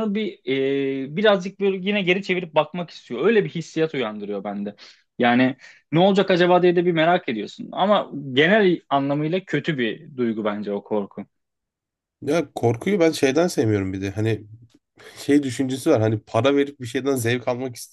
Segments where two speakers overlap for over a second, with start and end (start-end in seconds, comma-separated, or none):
none